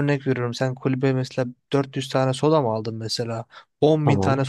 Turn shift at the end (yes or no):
no